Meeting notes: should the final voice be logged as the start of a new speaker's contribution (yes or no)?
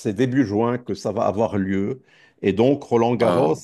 no